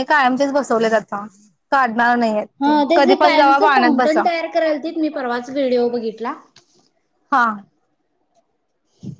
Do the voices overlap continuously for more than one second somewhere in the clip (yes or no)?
yes